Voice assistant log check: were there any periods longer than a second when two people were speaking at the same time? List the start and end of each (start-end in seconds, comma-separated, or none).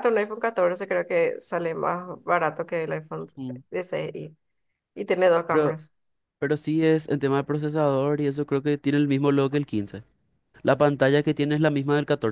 none